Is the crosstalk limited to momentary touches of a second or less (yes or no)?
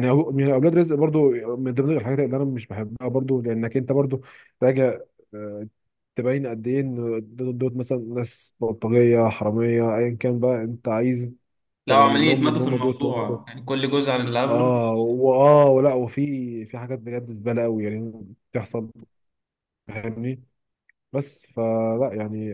no